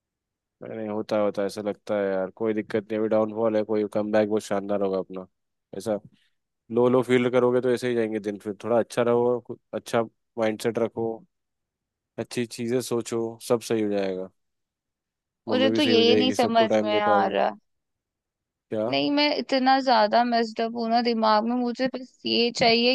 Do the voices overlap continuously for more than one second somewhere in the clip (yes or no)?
yes